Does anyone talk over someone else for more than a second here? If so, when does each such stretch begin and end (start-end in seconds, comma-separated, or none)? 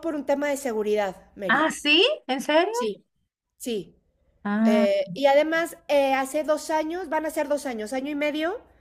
none